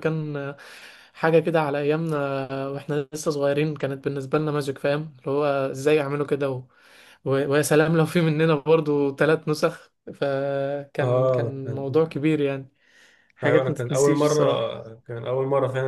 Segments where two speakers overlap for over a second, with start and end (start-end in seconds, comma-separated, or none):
13.4-14.8